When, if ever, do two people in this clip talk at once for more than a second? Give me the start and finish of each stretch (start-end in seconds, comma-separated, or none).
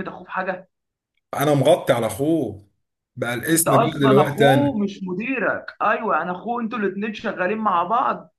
3.5-4.8